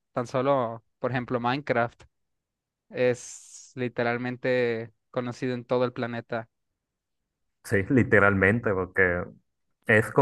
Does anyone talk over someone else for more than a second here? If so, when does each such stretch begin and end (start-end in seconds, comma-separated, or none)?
none